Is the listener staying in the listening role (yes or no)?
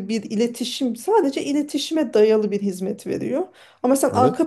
yes